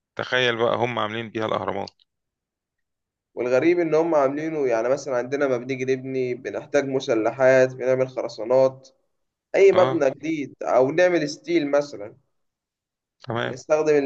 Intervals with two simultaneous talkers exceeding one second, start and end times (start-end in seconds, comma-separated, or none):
none